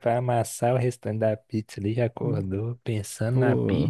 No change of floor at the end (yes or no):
no